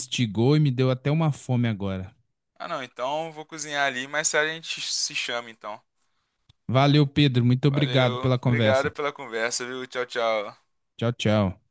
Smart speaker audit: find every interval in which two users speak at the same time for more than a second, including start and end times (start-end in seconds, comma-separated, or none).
7.7-8.9